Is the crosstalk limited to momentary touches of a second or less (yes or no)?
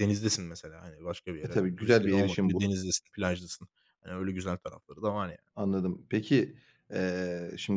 no